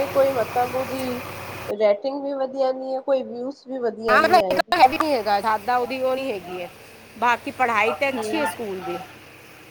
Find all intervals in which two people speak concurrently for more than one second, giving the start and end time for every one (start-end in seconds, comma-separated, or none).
none